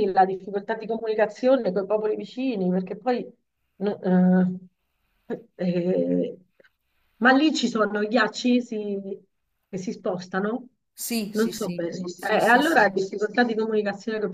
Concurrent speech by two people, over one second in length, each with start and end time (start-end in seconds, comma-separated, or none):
11.3-12.9